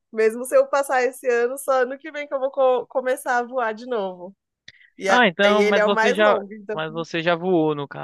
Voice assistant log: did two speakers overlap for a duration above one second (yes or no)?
yes